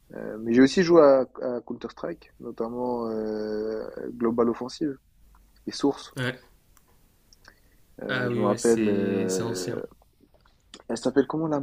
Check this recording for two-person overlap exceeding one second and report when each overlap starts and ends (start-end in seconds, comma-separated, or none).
8.1-9.8